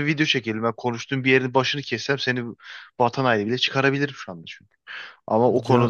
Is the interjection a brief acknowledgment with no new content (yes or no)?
yes